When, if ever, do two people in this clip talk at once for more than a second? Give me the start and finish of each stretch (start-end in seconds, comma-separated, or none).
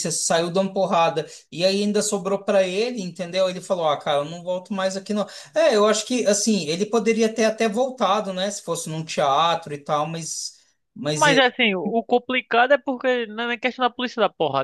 none